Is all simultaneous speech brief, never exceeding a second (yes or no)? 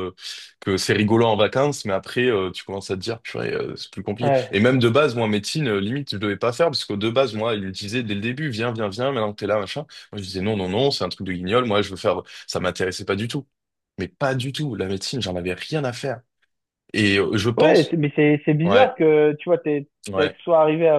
yes